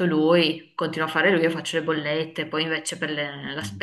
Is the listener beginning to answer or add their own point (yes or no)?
no